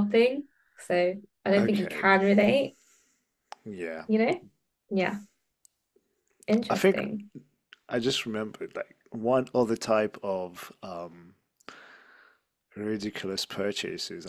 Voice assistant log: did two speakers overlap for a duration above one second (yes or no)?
no